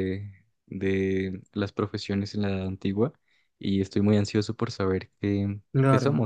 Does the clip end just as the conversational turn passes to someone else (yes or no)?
no